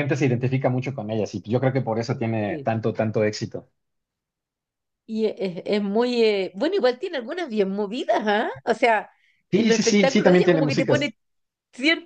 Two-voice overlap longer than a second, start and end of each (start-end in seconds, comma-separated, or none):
9.5-11.1